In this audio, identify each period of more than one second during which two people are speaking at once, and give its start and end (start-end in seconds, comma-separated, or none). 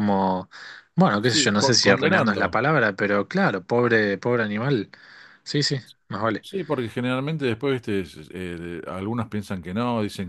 1.2-2.6